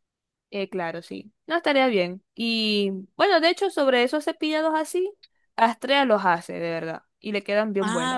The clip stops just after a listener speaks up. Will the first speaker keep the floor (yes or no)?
no